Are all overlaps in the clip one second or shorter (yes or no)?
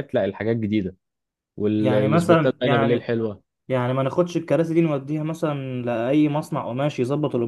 no